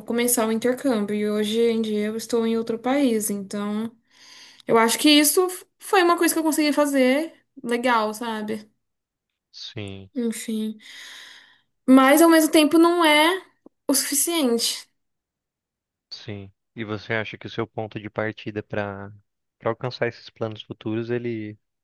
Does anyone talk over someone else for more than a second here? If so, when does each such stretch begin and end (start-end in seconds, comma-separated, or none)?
none